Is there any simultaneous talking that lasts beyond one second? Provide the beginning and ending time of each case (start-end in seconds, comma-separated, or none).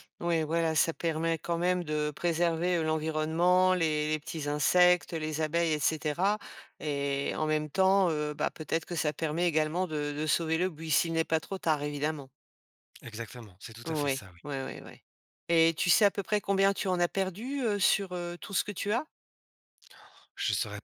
none